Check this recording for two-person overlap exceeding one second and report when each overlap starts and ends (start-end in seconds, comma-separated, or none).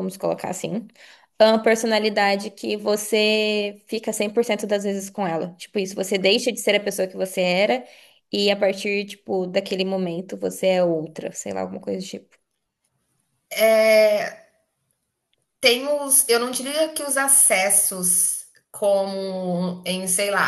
none